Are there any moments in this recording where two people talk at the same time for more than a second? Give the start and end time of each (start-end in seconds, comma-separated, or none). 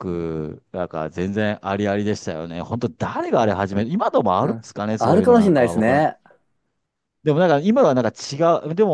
4.4-6.1